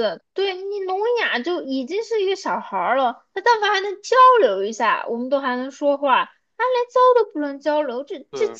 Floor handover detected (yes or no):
no